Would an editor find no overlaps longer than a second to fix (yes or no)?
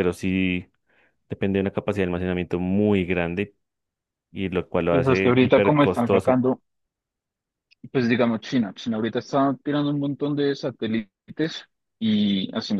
no